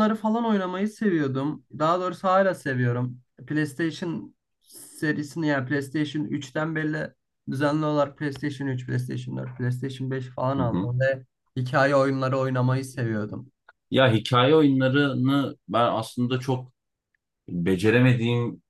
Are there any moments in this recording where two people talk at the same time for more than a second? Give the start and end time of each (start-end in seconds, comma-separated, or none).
none